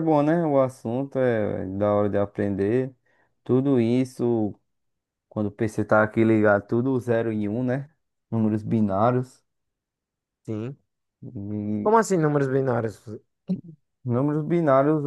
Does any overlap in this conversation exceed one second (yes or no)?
no